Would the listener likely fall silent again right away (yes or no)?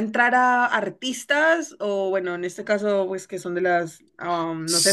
no